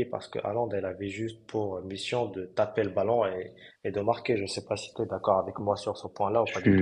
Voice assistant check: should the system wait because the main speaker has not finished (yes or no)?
no